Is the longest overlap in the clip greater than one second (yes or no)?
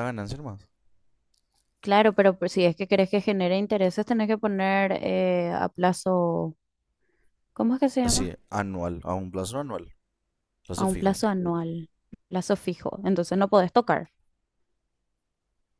no